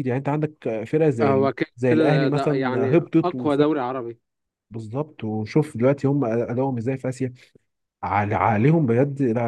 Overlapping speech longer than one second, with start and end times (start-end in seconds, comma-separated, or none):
1.2-3.3